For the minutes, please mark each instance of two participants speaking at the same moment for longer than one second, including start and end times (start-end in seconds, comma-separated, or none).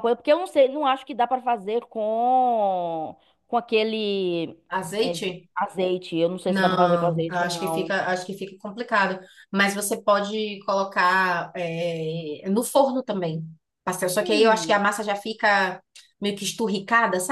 6.5-7.9